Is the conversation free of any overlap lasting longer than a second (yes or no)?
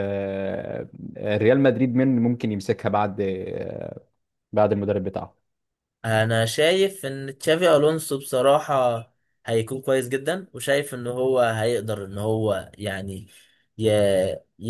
yes